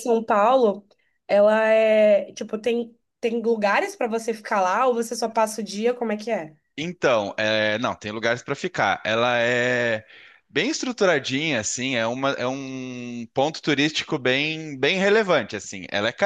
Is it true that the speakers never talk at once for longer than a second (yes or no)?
yes